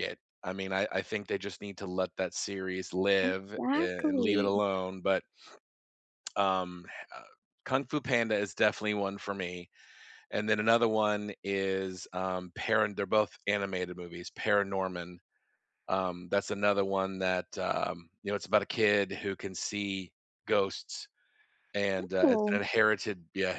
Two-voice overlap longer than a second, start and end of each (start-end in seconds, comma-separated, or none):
3.2-4.6